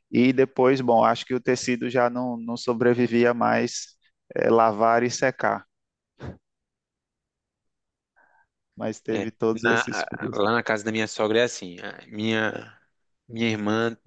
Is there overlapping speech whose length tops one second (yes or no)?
yes